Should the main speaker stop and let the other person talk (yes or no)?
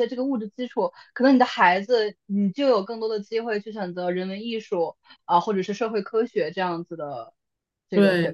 yes